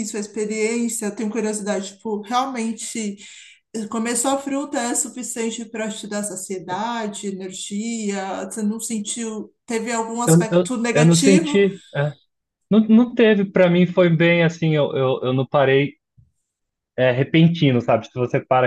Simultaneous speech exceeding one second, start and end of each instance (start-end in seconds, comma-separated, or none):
10.2-11.6